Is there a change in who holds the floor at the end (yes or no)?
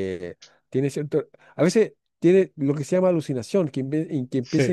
no